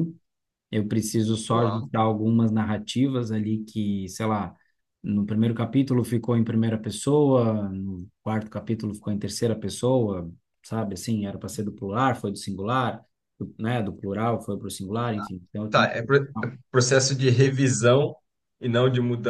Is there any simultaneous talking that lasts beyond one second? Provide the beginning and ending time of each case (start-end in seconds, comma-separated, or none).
none